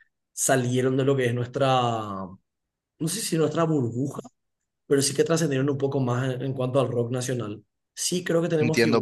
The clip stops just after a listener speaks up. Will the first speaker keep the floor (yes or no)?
no